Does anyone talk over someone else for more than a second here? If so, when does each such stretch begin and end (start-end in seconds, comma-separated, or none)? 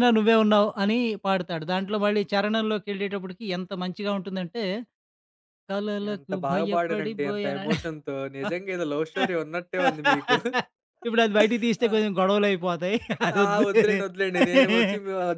6.1-7.8